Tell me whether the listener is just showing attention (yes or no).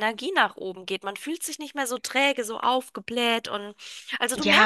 no